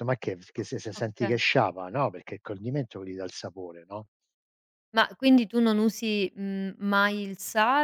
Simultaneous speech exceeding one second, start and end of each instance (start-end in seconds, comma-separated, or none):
none